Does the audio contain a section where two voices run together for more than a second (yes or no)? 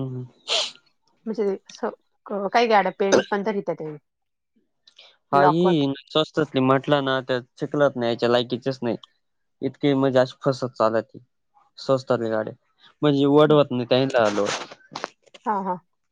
no